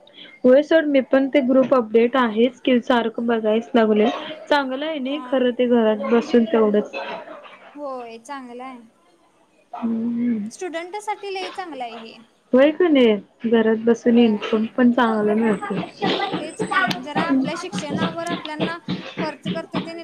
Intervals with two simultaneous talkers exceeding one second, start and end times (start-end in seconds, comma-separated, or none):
none